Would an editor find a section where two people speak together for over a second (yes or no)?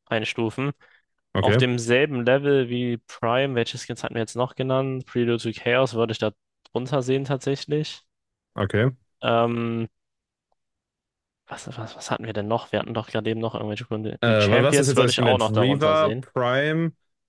yes